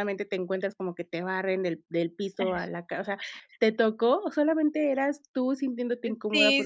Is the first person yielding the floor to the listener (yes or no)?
yes